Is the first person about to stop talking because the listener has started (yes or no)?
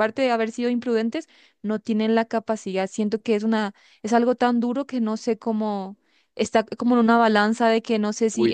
yes